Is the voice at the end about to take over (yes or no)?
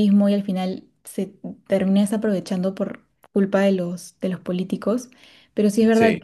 no